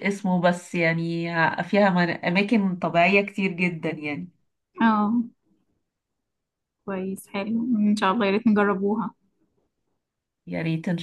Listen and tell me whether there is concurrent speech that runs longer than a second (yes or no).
no